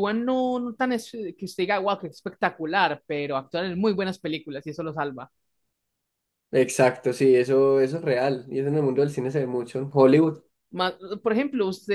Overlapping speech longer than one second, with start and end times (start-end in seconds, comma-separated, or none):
none